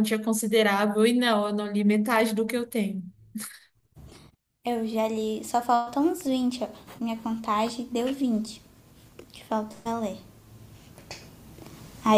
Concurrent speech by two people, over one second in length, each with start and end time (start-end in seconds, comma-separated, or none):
none